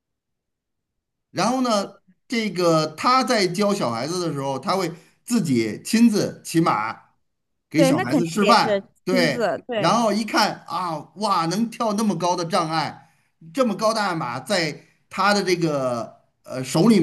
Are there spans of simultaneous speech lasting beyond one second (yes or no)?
yes